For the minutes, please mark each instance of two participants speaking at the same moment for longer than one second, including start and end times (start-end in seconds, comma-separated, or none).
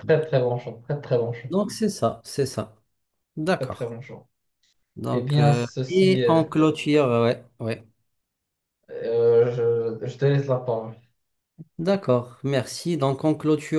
5.1-6.5